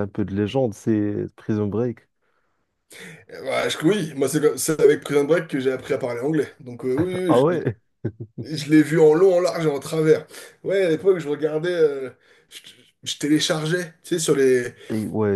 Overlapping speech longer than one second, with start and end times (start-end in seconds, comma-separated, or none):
none